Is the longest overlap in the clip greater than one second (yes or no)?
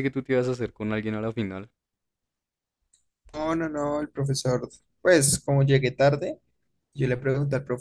no